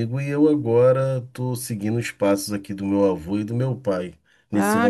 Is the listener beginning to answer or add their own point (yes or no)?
yes